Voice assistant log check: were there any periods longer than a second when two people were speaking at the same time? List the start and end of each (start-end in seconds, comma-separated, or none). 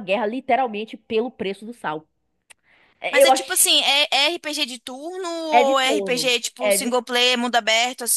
5.5-6.9